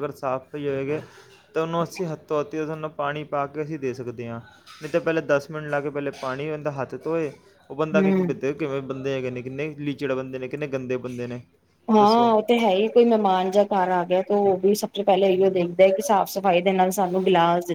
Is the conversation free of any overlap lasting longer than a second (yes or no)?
yes